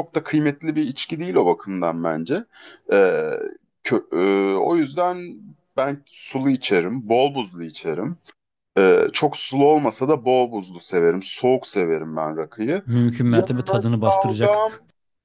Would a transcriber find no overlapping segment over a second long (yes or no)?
no